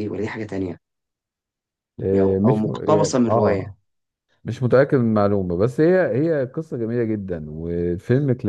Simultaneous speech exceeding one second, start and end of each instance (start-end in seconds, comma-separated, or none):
2.2-3.7